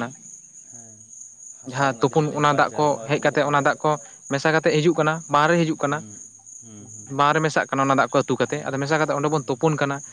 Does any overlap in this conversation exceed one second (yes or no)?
yes